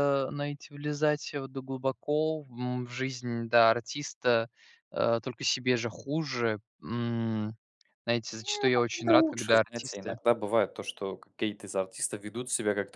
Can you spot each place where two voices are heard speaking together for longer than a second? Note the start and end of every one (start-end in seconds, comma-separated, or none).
8.3-10.2